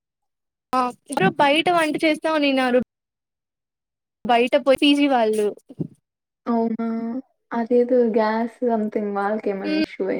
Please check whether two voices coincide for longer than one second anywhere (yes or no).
no